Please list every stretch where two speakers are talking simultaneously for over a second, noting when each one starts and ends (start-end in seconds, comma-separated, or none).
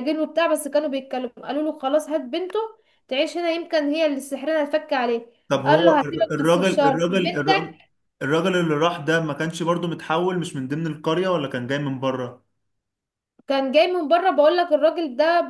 5.6-7.7